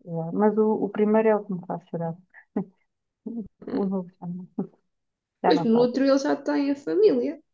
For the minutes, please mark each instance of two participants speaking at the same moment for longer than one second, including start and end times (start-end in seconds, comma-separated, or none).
none